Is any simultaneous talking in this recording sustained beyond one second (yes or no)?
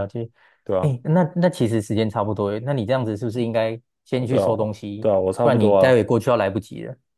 yes